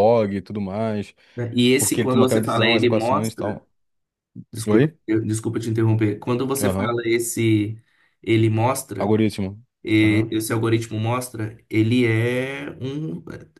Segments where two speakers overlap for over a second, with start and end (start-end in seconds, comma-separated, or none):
1.8-3.6